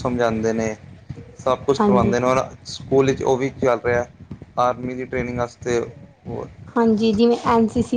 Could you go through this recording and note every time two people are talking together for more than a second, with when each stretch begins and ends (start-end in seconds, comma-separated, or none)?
none